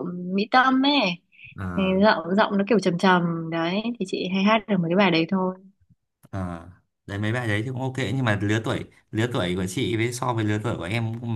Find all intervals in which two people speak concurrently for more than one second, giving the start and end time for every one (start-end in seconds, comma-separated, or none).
none